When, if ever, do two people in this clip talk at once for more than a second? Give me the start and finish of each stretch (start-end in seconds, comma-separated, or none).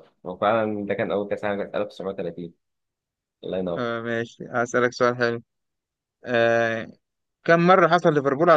none